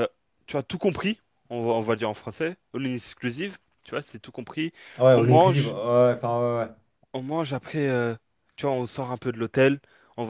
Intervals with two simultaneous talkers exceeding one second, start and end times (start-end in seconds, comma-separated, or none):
none